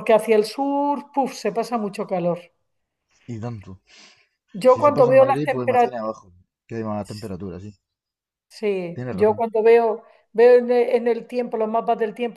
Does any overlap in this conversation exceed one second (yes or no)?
yes